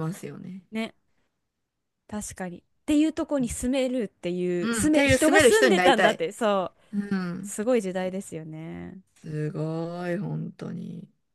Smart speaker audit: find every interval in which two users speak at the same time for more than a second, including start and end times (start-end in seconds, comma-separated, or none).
4.6-6.2